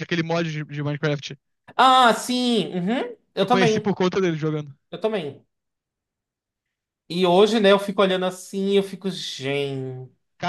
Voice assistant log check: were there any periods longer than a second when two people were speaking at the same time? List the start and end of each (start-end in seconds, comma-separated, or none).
none